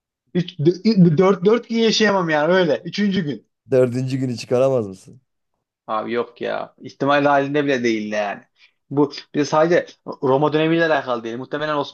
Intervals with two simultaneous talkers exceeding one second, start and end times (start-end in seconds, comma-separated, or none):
none